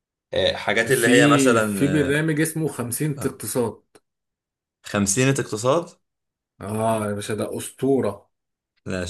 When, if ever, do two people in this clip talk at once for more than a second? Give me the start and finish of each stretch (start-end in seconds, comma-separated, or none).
0.9-2.3